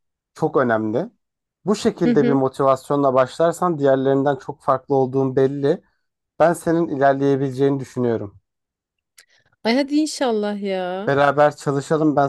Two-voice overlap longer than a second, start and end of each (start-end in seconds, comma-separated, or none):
none